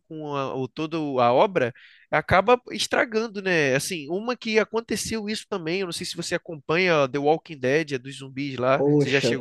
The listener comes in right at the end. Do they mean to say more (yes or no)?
yes